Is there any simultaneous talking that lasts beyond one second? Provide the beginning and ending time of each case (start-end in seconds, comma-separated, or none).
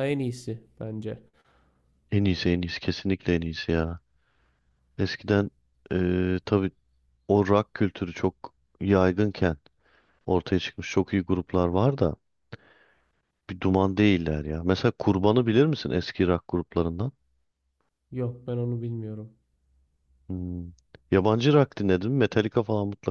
none